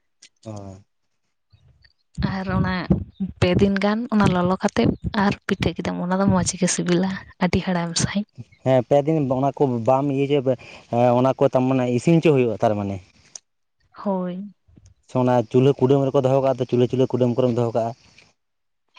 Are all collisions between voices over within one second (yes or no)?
yes